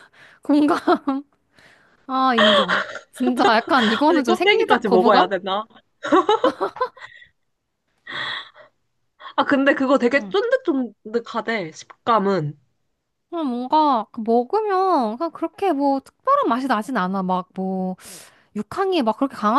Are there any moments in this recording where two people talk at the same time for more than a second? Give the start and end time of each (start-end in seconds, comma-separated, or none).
4.1-5.3